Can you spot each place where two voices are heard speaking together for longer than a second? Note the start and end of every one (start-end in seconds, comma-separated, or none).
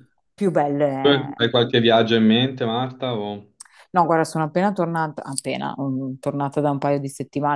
none